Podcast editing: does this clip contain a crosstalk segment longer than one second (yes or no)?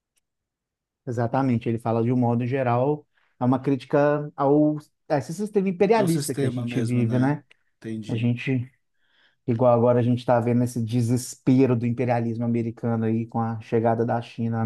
yes